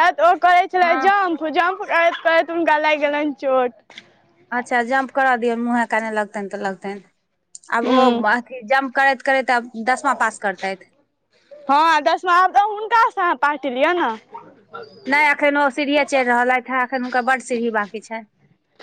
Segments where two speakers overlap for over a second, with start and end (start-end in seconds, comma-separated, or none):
none